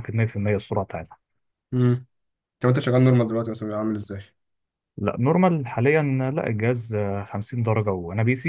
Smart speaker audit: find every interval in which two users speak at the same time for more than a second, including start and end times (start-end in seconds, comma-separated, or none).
none